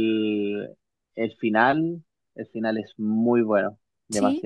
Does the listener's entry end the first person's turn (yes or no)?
yes